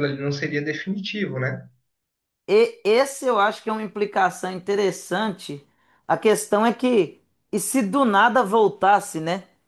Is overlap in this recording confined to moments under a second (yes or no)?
yes